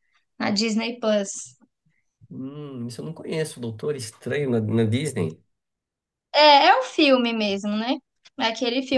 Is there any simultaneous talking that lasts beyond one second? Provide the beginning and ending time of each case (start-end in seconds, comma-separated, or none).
none